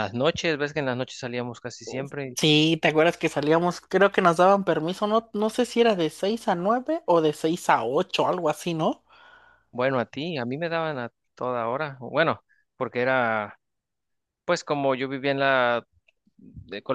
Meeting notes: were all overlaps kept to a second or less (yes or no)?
yes